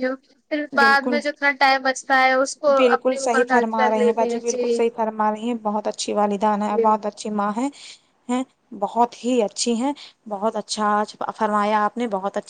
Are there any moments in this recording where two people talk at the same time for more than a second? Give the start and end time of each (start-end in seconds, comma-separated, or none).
2.8-4.8